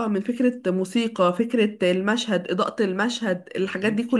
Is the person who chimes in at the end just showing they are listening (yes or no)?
yes